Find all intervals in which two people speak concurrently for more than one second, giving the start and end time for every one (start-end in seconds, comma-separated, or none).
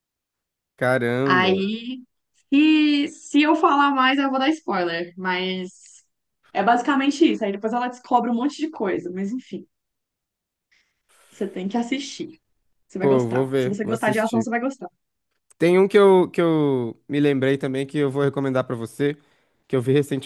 13.0-14.5